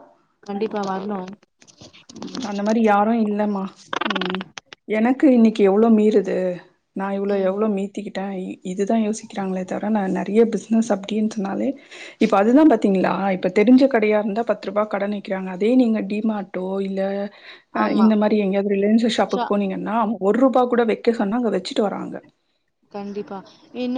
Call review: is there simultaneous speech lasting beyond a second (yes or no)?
no